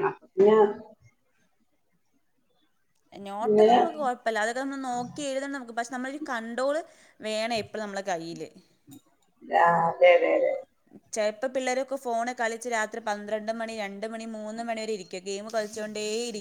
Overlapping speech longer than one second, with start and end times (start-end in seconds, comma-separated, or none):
none